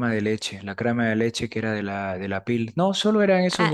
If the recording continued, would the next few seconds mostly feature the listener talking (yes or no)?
yes